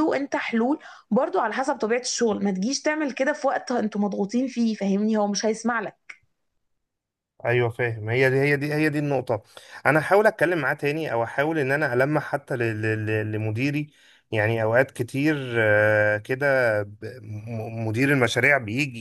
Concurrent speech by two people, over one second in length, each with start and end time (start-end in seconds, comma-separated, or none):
none